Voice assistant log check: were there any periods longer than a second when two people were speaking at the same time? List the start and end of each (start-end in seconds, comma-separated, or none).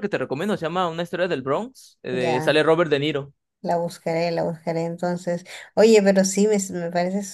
none